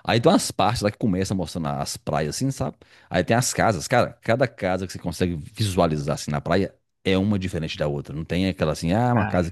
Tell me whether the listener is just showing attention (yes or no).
yes